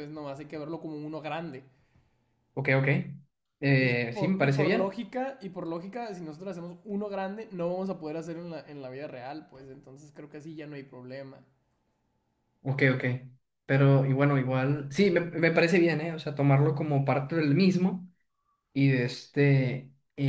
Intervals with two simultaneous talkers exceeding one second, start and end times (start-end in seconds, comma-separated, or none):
3.8-5.0